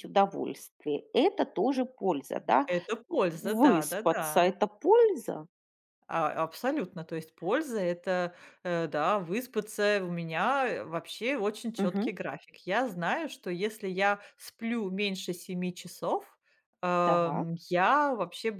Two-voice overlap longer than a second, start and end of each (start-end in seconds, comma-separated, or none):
3.3-4.5